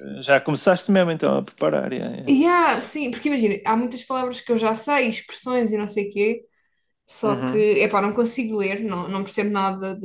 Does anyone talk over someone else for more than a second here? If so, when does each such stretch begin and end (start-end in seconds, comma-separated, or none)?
none